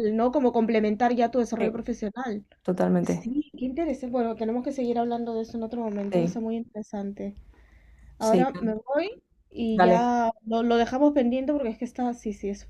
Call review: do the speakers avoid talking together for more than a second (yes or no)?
yes